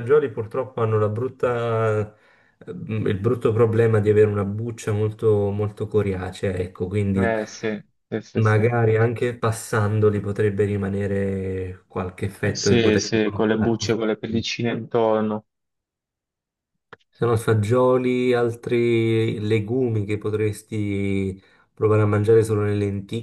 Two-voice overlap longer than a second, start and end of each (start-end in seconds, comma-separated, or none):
12.4-13.9